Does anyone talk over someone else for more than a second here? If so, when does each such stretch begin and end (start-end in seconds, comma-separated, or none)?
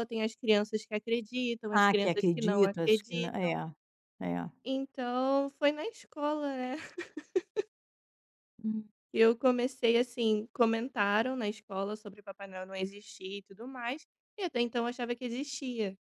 1.7-3.5